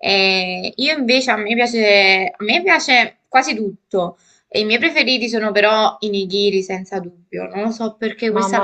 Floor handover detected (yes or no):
no